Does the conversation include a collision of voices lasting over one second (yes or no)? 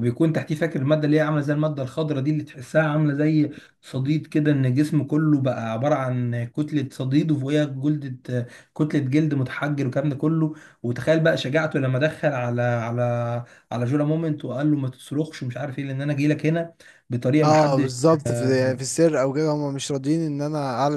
no